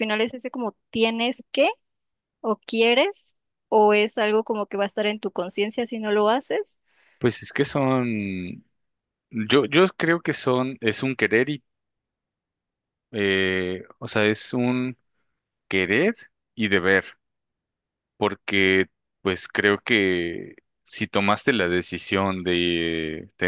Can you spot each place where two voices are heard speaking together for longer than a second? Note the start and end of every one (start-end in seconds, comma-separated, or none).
none